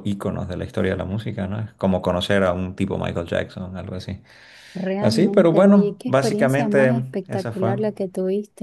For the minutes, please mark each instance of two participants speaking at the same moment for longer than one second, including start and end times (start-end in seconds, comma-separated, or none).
5.0-7.8